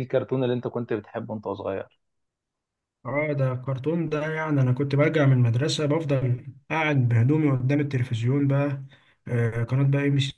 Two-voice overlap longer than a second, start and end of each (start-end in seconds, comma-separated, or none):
none